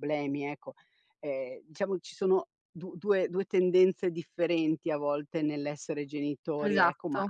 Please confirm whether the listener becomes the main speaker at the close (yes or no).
no